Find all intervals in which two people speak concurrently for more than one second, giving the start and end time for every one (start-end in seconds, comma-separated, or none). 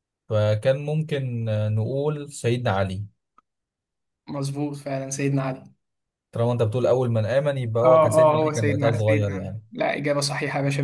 7.8-9.6